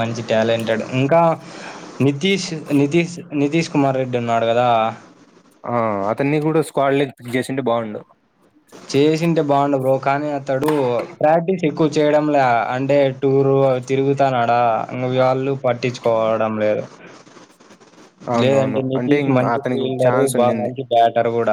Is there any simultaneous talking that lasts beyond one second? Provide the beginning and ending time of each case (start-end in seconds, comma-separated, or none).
18.4-20.7